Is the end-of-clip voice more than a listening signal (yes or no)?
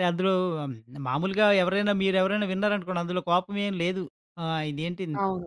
no